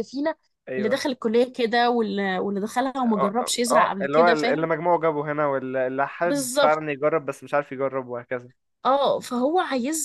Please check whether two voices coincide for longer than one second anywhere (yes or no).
yes